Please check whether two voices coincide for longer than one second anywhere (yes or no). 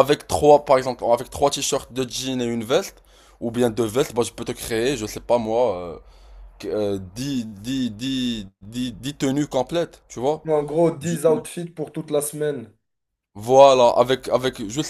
no